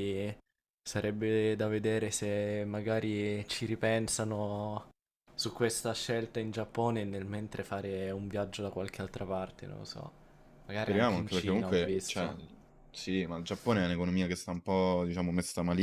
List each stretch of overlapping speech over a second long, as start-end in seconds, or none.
10.8-12.3